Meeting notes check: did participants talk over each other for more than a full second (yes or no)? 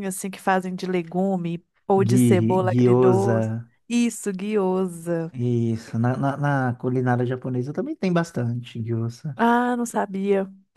yes